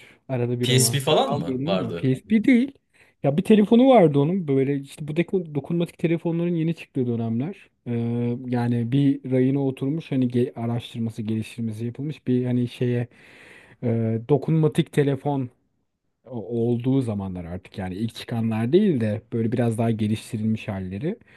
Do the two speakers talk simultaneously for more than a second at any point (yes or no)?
yes